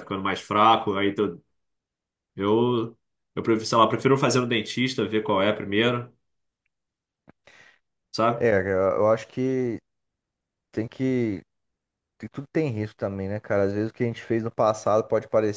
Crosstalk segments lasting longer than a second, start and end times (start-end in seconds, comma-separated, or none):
none